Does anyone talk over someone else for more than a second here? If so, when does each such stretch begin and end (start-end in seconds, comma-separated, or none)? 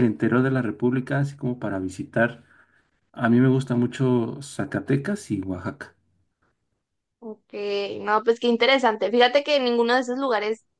none